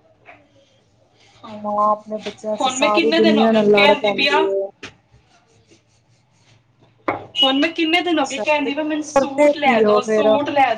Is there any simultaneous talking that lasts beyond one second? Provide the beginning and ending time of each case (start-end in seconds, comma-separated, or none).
2.6-4.4, 8.1-10.3